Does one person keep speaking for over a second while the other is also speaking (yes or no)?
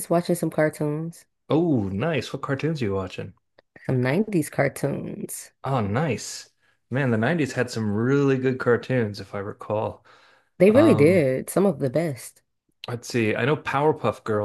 no